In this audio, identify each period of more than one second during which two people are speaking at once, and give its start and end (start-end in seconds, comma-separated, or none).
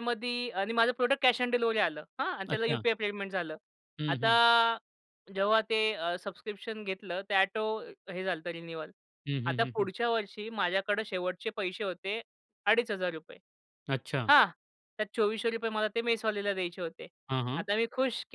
none